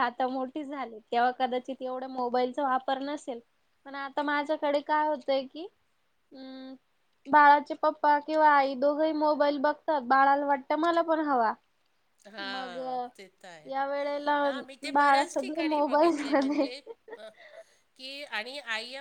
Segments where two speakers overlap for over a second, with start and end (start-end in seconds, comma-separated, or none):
14.9-16.6